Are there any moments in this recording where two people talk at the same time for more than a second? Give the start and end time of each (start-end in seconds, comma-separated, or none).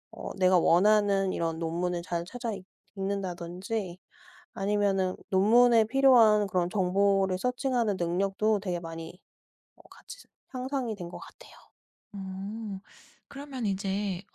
none